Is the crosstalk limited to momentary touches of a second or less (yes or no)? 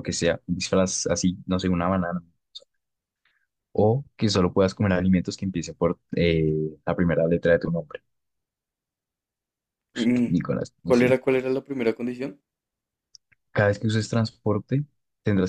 yes